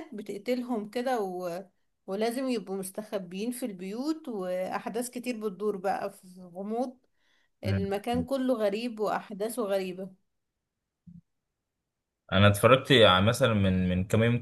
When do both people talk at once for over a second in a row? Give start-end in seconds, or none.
none